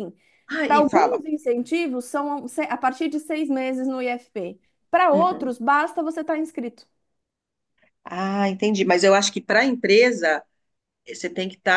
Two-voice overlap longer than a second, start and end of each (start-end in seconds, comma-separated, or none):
none